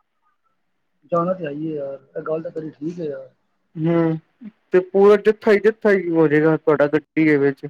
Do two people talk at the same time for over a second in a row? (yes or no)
no